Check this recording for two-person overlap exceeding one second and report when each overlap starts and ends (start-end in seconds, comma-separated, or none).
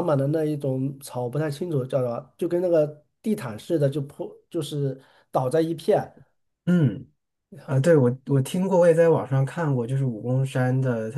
none